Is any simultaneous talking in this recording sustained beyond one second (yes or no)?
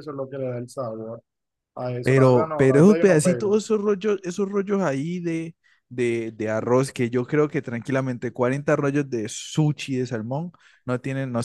yes